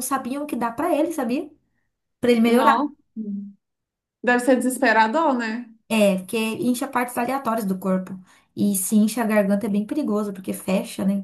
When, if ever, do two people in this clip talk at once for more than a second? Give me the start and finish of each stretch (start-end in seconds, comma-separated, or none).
none